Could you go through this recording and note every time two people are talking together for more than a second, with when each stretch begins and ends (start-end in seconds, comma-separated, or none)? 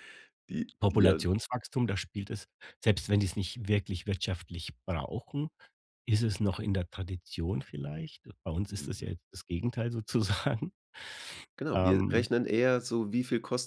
none